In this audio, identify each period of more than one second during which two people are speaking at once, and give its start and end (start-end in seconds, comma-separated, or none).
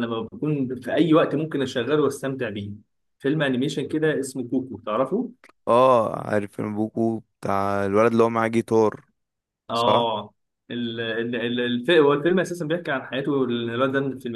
none